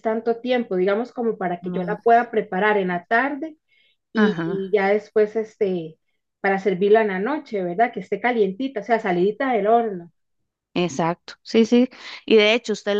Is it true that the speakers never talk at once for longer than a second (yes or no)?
yes